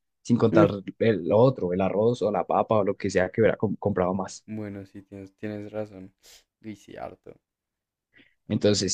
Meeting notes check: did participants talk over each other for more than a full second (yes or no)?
no